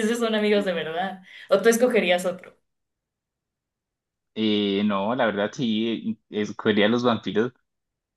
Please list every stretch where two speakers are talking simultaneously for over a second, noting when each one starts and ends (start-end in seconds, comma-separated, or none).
none